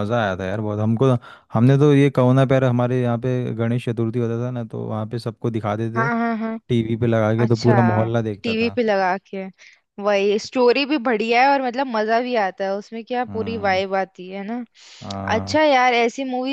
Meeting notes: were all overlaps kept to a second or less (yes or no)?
yes